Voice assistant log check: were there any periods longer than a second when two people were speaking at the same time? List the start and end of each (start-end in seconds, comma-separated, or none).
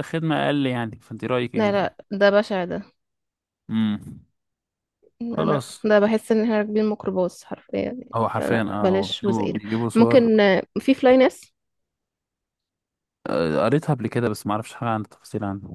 8.1-10.4